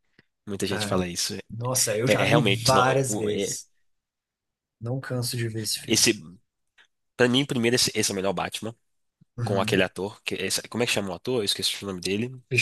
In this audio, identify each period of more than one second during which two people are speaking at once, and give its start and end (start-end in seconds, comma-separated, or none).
2.1-3.6